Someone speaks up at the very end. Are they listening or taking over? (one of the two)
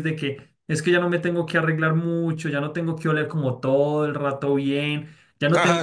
listening